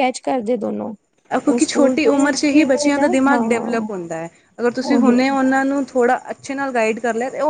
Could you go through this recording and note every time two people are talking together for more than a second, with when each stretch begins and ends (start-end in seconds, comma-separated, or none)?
1.5-3.4